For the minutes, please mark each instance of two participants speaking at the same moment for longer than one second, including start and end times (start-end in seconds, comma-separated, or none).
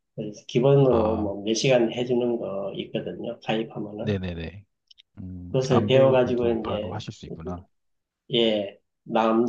5.5-7.0